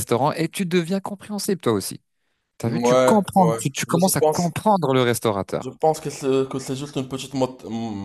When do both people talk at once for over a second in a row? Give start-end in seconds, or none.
2.6-4.5